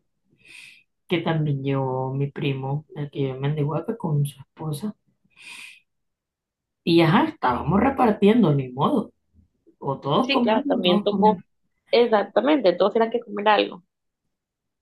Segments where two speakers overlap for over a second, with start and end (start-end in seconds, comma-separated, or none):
10.2-11.4